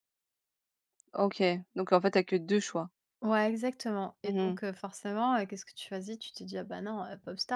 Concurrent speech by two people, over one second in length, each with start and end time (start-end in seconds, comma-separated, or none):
none